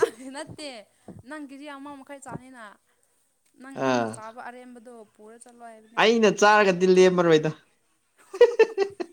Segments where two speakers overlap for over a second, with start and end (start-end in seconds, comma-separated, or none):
none